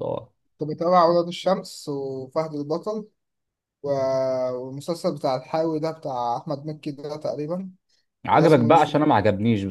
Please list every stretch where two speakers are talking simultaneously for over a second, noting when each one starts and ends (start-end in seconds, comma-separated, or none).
none